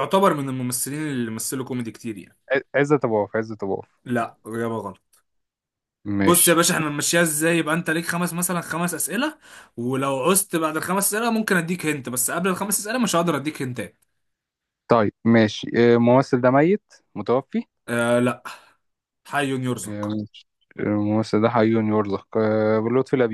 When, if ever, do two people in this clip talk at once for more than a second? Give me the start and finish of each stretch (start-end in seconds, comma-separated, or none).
none